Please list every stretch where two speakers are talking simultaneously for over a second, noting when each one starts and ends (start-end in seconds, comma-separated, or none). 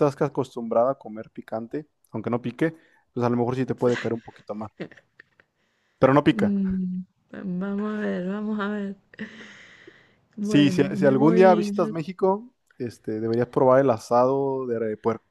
10.4-11.9